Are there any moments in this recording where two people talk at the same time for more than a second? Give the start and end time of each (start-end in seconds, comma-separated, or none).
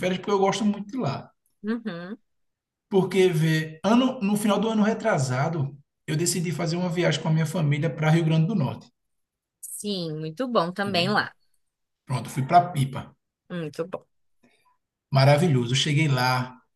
none